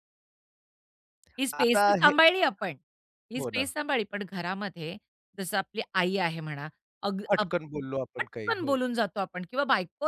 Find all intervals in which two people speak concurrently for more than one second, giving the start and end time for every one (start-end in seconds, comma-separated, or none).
none